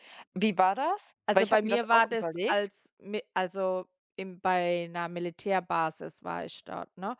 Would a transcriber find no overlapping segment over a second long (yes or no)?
no